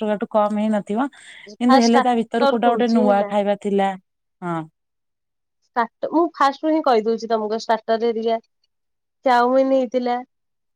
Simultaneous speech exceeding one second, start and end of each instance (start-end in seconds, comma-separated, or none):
1.7-3.3